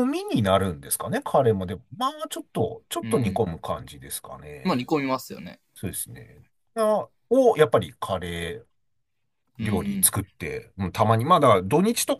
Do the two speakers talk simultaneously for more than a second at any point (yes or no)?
no